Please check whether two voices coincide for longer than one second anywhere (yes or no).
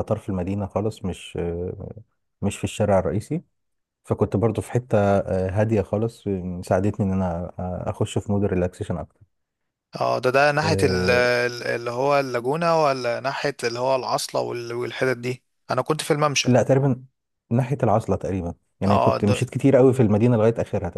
no